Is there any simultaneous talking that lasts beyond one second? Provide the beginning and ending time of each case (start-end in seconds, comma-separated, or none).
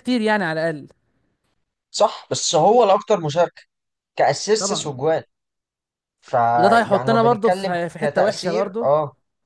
6.5-8.9